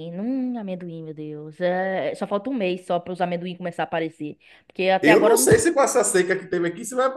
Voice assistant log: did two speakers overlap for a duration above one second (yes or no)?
no